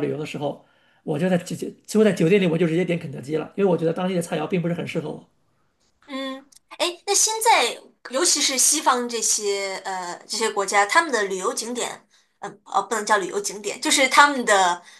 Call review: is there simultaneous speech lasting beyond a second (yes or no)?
no